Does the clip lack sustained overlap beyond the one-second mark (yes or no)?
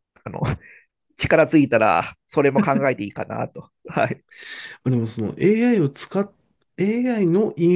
yes